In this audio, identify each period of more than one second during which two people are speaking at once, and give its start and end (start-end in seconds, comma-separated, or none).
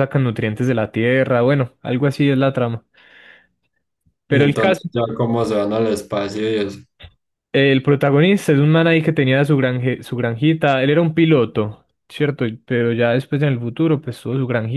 none